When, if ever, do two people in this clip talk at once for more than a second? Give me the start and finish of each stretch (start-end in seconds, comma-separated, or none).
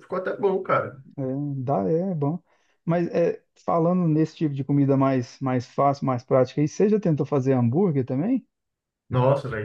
none